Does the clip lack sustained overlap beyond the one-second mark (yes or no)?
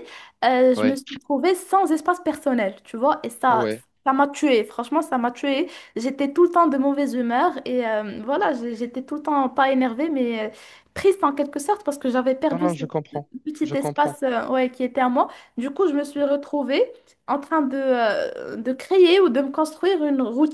yes